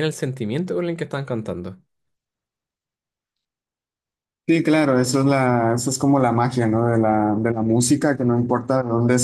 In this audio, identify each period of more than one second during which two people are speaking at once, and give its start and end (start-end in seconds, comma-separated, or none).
none